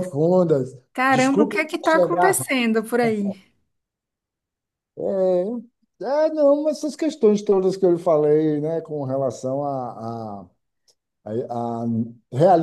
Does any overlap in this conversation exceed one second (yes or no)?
yes